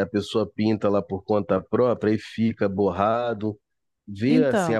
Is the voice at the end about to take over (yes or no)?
yes